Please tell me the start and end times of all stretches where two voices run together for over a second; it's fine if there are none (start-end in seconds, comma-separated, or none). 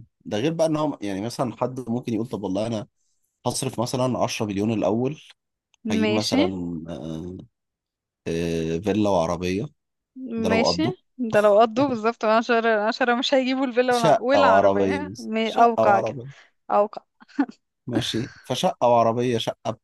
13.9-16.2